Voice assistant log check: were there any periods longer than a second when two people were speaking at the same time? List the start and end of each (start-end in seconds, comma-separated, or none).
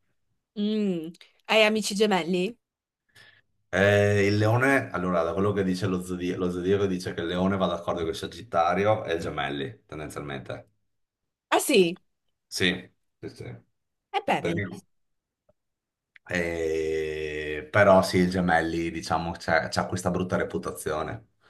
none